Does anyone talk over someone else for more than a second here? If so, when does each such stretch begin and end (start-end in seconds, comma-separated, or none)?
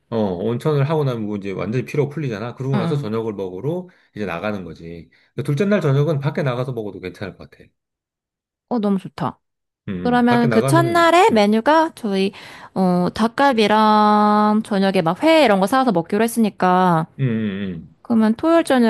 10.0-11.5